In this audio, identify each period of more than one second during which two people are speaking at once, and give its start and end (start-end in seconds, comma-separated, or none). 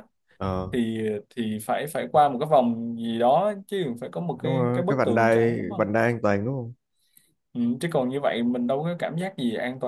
4.4-5.9